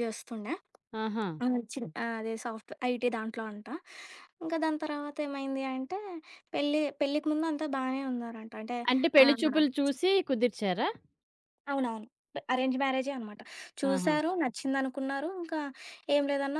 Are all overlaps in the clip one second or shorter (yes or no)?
yes